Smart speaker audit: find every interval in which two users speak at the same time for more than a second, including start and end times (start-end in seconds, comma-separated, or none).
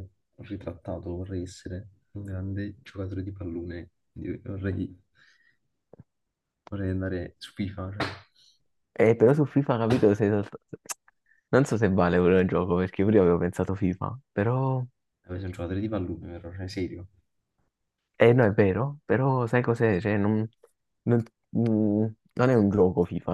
none